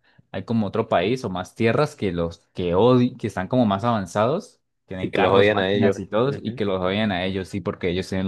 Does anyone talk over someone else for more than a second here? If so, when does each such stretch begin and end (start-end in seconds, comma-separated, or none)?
5.0-6.6